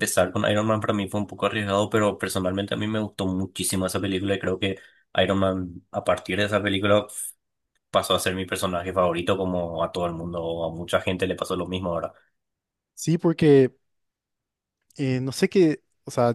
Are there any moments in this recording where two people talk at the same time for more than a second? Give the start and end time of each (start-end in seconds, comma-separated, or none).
none